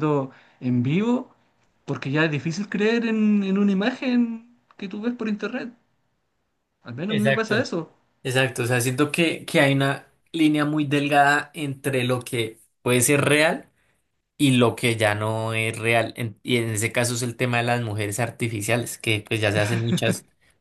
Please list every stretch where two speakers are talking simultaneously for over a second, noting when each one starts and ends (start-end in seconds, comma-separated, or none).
none